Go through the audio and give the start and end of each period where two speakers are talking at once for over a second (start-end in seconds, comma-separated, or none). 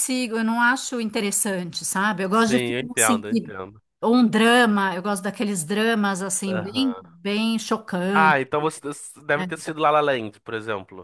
2.3-3.5